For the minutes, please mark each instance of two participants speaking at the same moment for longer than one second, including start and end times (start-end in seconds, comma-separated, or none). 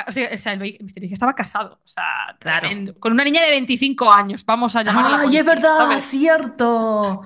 4.8-6.2